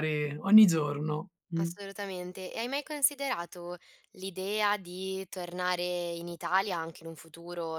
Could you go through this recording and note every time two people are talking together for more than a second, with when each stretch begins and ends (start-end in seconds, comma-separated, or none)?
none